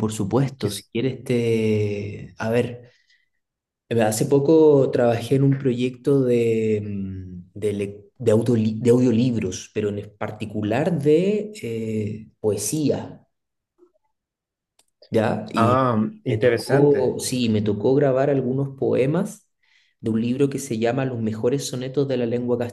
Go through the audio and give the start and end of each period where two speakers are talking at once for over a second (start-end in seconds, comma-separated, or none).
15.5-17.2